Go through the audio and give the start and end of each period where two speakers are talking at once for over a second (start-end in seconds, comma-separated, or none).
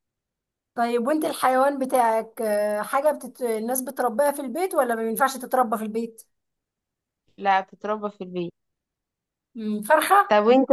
none